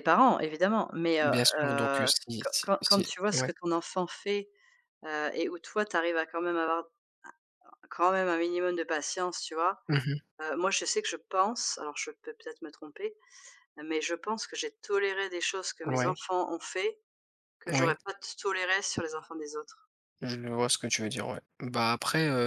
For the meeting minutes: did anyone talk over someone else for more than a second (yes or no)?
yes